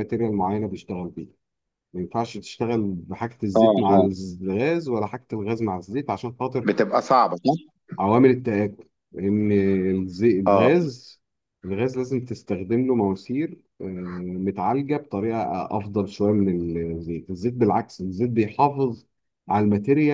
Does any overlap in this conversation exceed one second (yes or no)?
no